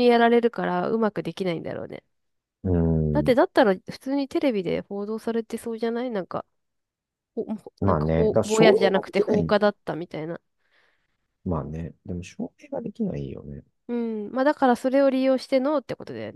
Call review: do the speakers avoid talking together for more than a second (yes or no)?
no